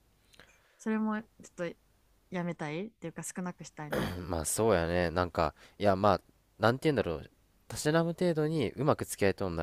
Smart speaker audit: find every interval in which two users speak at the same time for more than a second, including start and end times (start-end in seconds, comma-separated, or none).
none